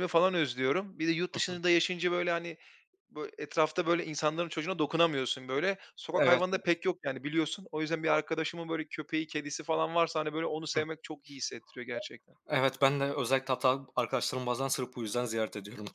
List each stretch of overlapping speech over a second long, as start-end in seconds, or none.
none